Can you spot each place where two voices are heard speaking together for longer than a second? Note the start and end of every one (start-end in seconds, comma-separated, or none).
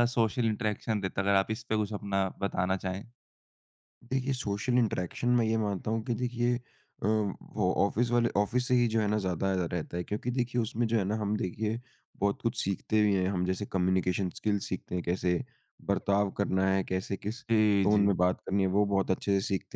none